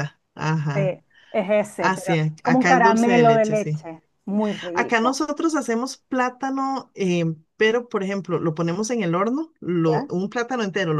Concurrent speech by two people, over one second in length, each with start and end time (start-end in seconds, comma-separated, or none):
1.8-3.9